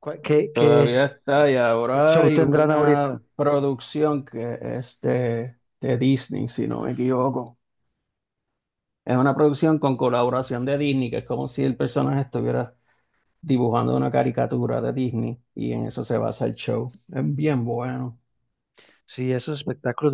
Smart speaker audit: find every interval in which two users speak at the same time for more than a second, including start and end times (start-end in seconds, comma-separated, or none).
1.9-3.2